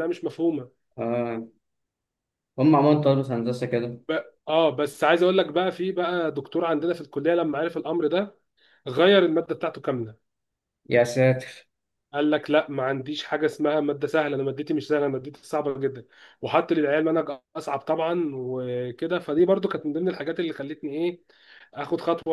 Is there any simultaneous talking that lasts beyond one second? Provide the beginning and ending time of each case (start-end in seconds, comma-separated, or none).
none